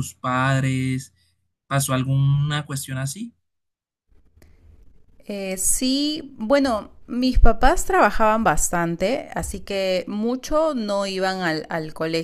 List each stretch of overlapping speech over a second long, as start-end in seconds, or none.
none